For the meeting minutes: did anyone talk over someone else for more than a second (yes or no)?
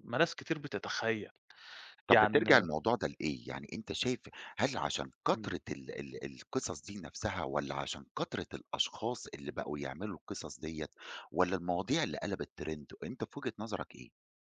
no